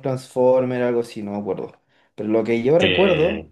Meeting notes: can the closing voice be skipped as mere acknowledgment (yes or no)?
yes